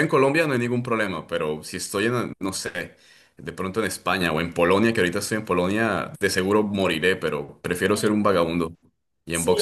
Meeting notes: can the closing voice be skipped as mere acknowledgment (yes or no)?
no